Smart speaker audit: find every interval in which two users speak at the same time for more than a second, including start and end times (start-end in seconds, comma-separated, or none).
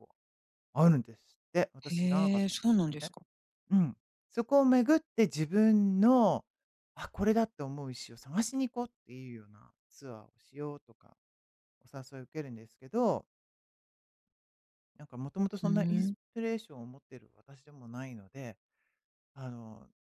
1.9-3.1